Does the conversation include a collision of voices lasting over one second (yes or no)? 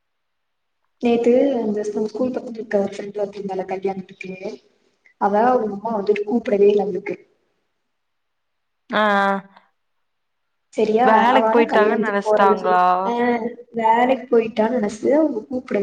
yes